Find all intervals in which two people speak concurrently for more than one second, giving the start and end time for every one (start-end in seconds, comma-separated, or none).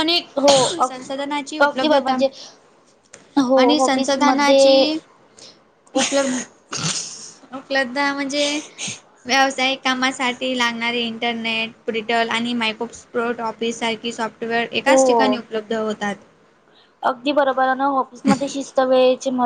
3.6-4.8